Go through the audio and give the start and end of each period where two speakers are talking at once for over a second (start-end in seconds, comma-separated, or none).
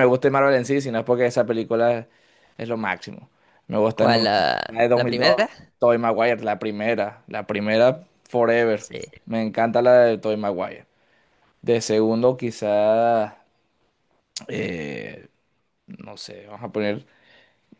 3.9-5.5